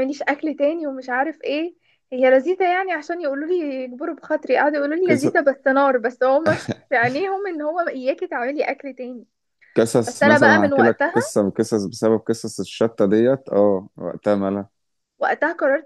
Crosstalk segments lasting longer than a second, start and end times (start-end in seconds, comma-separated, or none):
10.1-11.3